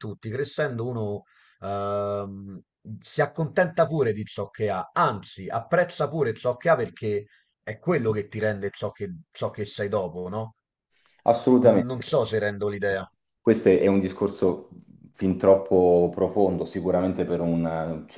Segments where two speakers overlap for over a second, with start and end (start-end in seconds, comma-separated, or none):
none